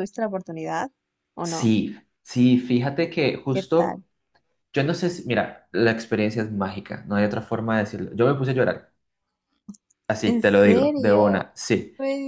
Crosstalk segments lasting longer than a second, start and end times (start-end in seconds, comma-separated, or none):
10.2-11.4